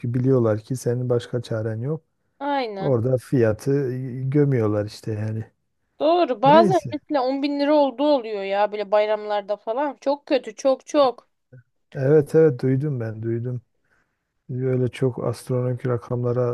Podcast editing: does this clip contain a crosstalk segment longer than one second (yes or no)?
no